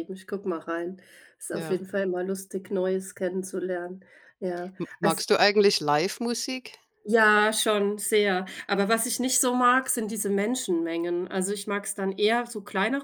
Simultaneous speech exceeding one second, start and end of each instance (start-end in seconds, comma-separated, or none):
none